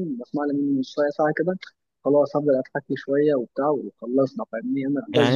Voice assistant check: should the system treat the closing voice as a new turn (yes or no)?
yes